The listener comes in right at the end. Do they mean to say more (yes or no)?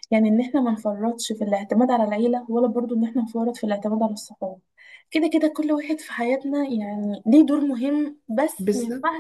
no